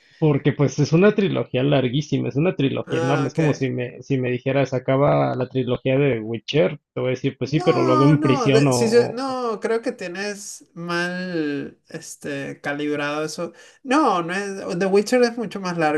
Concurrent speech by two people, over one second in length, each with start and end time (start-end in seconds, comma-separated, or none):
7.4-9.4